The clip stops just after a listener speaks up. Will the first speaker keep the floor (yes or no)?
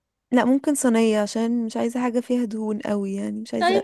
no